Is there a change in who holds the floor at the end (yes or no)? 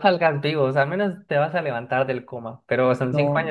no